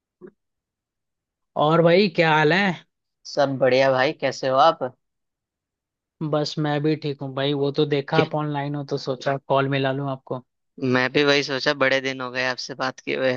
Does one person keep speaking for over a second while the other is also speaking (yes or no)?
no